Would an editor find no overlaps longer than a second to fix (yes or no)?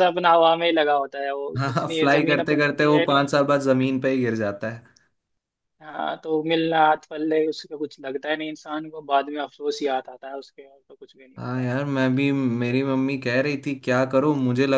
no